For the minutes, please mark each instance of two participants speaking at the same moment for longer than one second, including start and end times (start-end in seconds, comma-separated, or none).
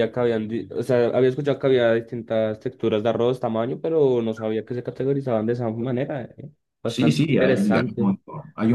6.9-8.1